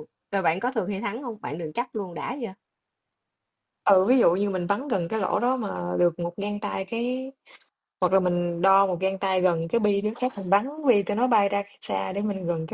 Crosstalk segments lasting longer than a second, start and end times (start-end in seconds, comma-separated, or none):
none